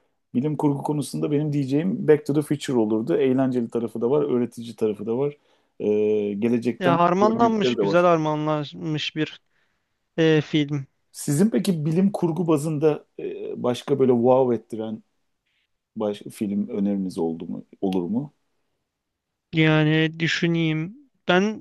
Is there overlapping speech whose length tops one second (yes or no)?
yes